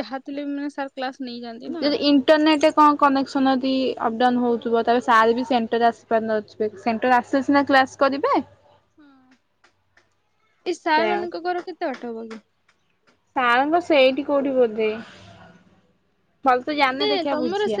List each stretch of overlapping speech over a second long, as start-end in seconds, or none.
4.3-5.8